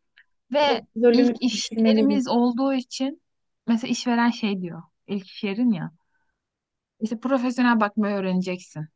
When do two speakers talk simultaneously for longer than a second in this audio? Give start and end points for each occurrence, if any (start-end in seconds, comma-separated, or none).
0.6-2.2